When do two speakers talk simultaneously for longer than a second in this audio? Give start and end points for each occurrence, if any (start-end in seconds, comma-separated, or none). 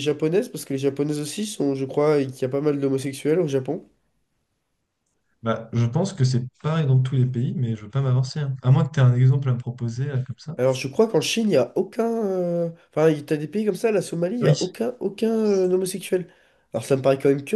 none